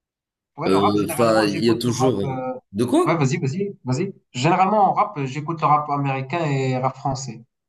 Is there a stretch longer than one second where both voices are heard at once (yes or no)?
yes